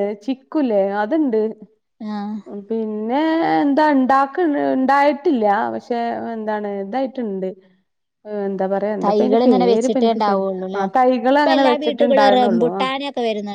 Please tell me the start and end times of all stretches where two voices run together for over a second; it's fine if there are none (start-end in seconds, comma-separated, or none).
9.0-10.8